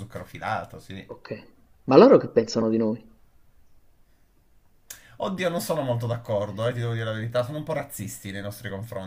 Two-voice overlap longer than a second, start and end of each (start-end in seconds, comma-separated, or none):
none